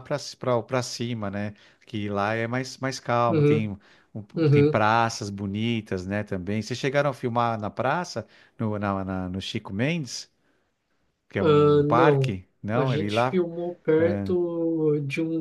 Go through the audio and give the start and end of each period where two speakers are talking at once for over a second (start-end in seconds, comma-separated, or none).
11.4-13.4